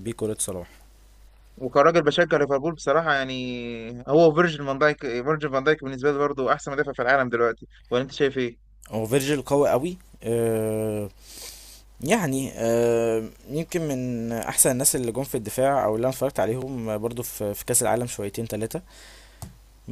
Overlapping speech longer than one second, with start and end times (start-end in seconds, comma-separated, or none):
none